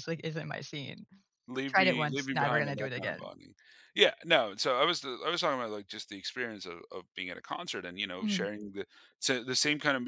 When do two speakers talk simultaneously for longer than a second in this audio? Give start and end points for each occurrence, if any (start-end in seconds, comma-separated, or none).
1.7-3.3